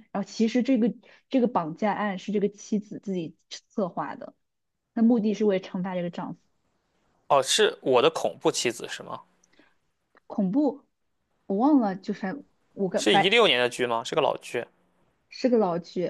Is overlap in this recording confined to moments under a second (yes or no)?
yes